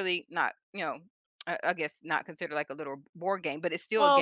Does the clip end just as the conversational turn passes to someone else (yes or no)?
yes